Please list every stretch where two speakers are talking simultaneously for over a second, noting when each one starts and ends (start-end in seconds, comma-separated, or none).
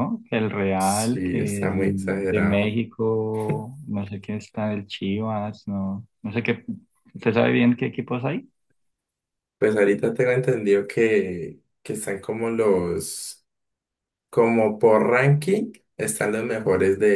0.8-2.8